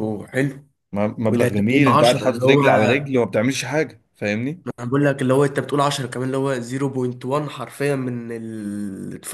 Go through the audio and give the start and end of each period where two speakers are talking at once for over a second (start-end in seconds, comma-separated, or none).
1.3-2.7